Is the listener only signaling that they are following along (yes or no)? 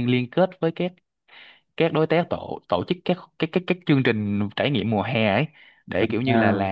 yes